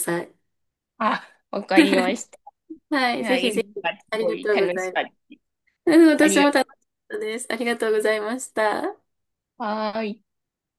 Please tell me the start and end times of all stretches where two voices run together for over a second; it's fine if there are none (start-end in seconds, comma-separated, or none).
3.2-5.0